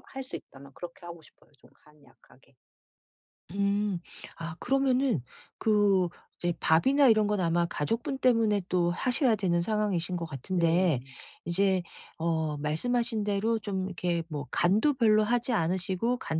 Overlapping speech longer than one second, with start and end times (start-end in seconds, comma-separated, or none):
none